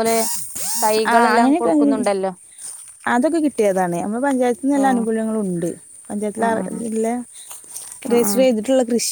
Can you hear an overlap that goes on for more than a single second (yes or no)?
no